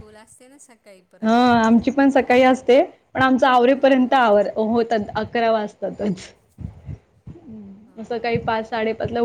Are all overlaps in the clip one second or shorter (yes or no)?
no